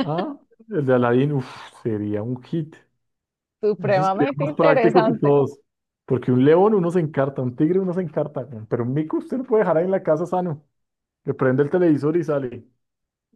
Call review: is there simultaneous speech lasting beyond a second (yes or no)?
yes